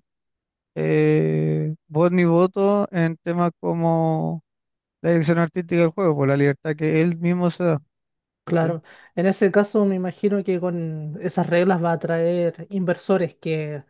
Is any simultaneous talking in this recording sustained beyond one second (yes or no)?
no